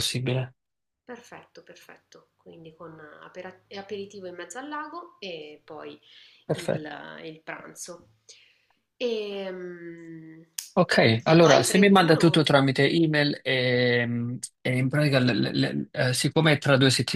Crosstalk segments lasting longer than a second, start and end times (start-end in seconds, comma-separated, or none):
11.2-12.4